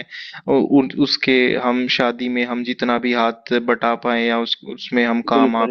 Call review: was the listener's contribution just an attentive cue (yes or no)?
no